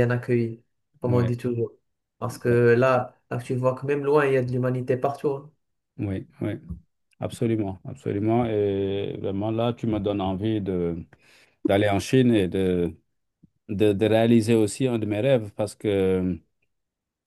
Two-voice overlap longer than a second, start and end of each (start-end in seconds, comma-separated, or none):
none